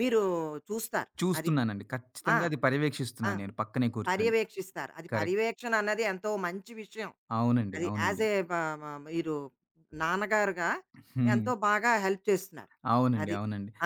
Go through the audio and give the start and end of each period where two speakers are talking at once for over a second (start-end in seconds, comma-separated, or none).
none